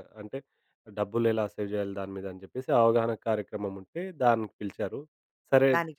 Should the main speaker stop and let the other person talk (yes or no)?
no